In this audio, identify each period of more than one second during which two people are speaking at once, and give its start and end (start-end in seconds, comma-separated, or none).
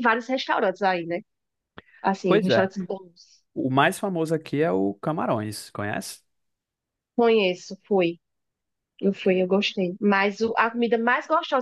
none